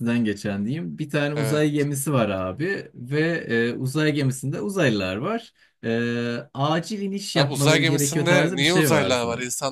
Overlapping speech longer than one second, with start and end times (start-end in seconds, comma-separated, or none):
7.4-9.1